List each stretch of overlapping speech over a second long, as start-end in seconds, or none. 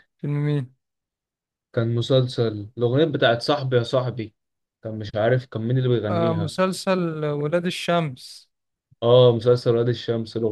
none